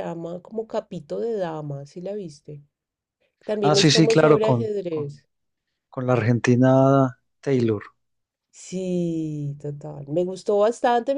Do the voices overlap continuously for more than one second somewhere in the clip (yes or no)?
yes